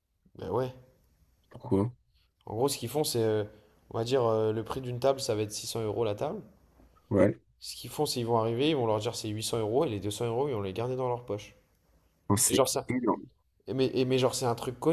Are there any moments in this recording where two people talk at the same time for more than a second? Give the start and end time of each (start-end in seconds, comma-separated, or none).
none